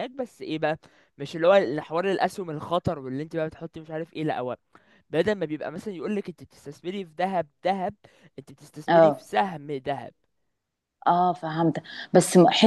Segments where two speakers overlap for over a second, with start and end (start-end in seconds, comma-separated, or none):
none